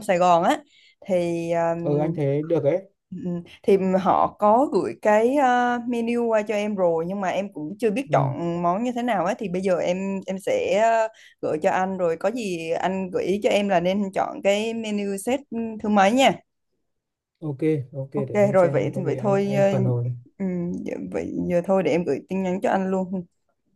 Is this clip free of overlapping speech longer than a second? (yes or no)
no